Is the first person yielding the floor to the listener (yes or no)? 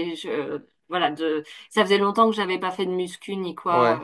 no